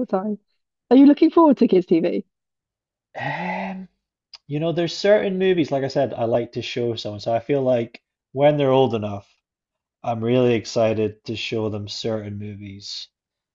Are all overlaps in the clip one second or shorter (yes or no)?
yes